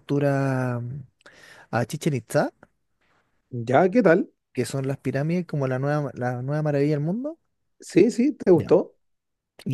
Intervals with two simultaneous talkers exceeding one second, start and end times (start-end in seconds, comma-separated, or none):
none